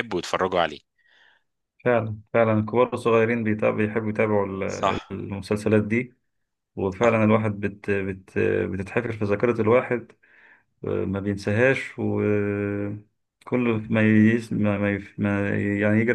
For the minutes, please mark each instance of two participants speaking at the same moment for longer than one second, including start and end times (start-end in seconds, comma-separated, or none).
none